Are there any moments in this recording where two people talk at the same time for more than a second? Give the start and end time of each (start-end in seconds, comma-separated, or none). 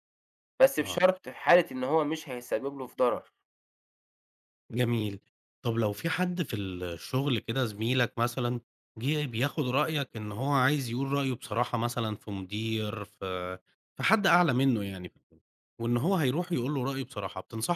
none